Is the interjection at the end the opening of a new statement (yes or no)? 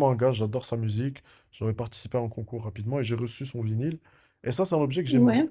no